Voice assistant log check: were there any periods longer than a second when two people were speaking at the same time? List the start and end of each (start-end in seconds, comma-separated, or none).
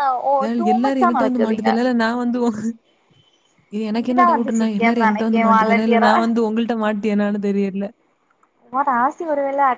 4.0-6.1